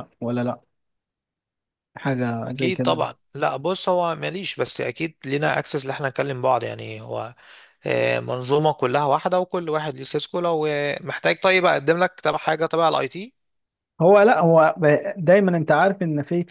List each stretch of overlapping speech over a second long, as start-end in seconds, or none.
none